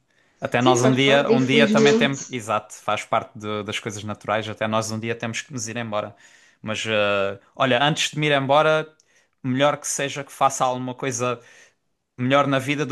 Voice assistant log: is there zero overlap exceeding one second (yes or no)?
no